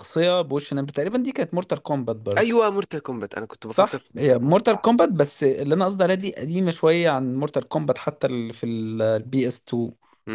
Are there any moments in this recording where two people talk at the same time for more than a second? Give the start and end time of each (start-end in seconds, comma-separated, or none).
3.7-4.9